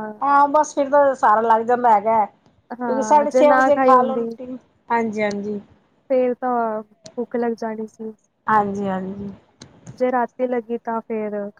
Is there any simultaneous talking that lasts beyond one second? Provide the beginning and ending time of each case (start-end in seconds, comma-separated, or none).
2.8-4.3